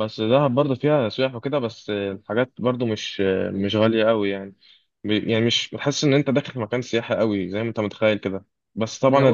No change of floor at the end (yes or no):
yes